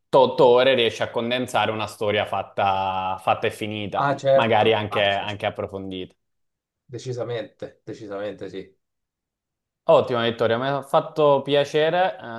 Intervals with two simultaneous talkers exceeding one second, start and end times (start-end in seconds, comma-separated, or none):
4.0-5.4